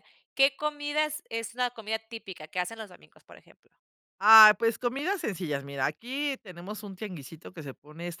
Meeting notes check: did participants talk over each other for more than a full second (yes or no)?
no